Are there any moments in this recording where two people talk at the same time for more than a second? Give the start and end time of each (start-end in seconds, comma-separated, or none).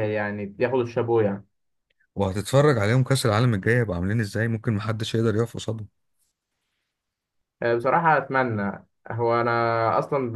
none